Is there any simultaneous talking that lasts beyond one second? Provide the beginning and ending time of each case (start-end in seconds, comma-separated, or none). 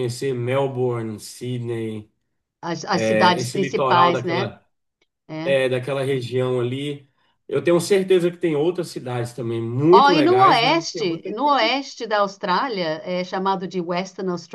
3.0-4.5, 9.9-11.8